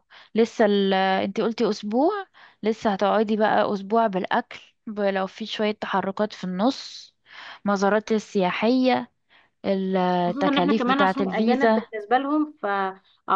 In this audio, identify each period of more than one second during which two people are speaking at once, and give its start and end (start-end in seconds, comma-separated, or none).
10.3-11.8